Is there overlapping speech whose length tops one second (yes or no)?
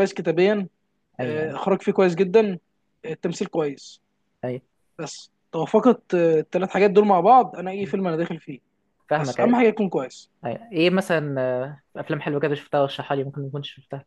no